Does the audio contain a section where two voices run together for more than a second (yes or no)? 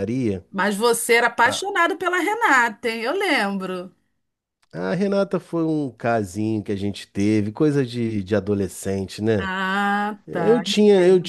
no